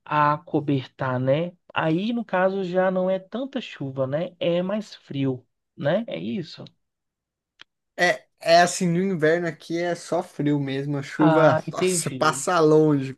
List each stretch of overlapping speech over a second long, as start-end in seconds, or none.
11.2-12.4